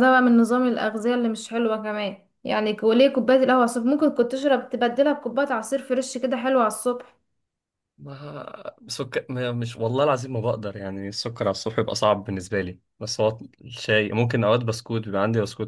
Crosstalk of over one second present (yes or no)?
no